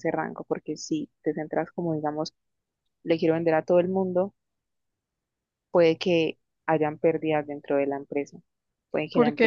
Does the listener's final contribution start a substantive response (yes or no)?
no